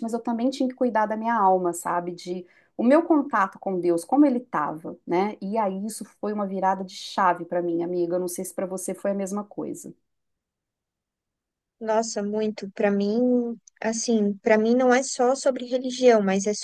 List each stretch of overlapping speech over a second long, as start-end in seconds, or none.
none